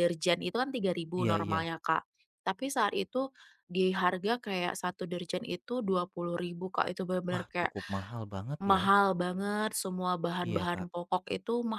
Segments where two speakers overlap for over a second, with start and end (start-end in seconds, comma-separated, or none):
none